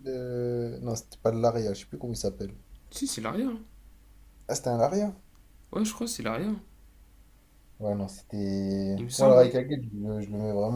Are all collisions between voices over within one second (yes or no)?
yes